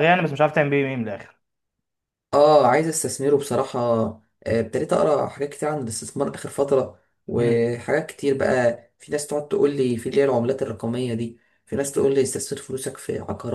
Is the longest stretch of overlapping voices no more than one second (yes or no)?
yes